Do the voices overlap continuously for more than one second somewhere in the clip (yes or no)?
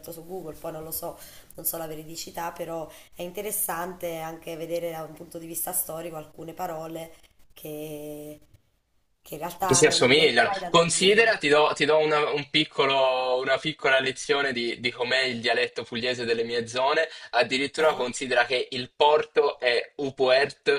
yes